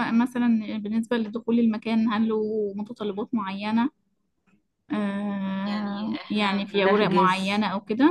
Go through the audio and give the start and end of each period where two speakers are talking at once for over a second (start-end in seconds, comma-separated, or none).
5.7-7.6